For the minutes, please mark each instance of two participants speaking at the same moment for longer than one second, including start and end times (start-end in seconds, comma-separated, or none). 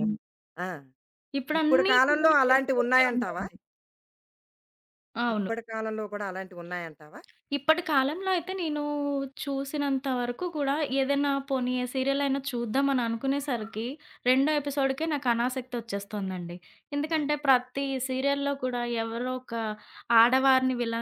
1.6-3.4